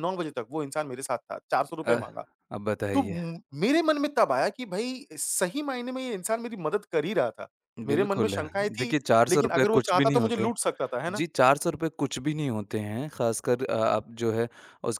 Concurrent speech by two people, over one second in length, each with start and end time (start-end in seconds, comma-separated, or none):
7.9-10.5